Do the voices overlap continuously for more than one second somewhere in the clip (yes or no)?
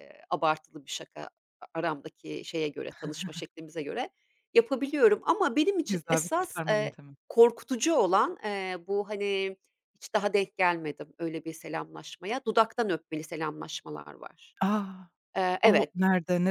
yes